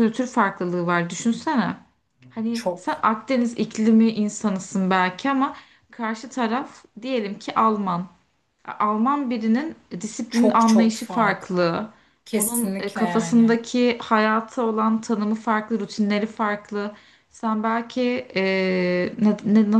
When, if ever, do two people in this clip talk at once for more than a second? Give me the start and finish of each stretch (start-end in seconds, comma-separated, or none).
10.3-11.7, 12.3-13.6